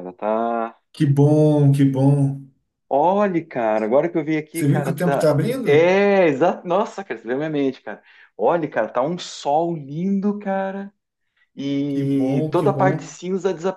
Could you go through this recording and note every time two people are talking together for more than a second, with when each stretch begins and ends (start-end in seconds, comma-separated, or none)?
4.5-5.9, 11.9-13.1